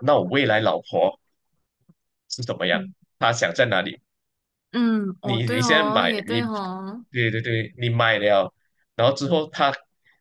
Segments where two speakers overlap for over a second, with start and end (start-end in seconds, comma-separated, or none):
5.2-6.4